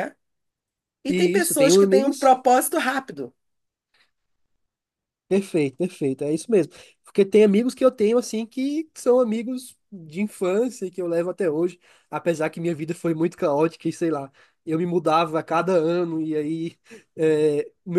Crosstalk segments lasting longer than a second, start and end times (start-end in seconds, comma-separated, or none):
1.1-2.3